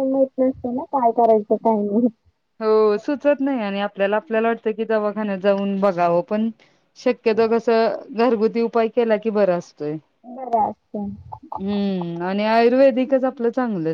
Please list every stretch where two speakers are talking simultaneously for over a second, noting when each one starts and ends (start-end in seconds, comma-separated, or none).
none